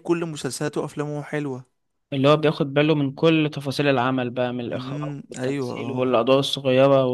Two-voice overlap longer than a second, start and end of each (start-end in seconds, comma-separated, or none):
4.7-6.2